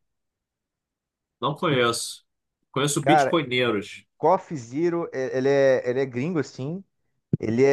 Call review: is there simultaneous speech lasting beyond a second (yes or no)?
no